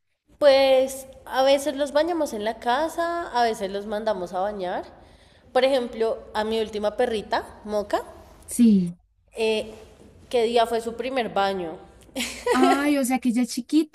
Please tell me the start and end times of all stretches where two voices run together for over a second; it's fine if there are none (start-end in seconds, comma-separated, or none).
none